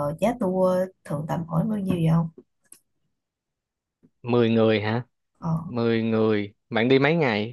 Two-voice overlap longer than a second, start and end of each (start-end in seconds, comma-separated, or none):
none